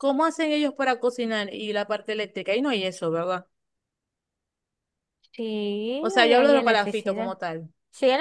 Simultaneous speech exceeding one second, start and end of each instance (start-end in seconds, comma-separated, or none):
6.0-7.3